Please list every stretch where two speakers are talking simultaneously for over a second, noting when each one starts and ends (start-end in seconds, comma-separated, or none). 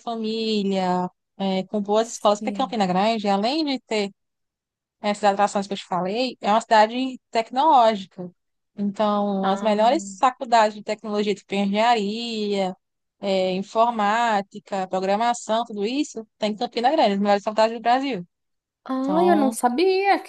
none